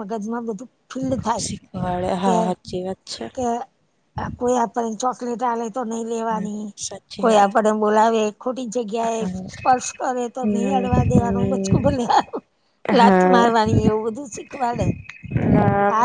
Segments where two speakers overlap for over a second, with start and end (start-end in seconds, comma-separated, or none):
10.5-11.8